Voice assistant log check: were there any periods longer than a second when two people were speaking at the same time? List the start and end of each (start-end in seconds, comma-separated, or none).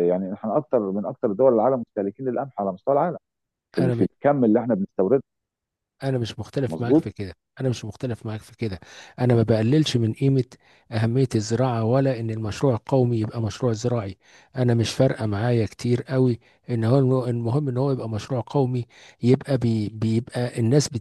none